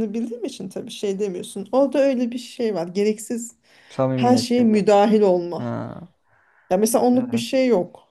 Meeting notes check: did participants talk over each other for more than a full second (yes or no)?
no